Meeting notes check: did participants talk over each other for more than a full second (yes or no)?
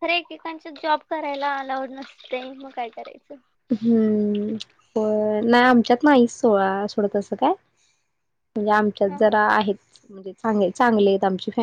no